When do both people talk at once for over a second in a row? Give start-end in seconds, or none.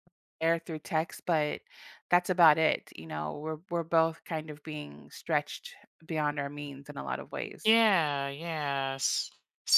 none